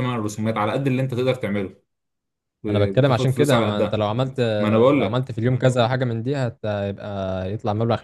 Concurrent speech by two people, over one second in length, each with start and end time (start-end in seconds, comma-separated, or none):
2.7-4.0